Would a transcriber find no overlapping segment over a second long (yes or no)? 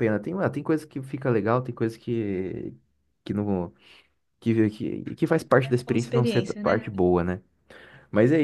no